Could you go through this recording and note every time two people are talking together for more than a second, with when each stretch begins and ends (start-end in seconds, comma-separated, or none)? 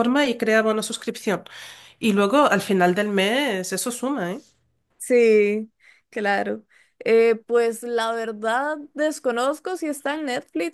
none